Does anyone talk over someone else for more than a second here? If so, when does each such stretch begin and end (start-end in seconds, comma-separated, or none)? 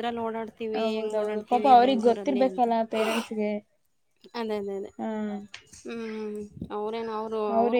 0.8-2.6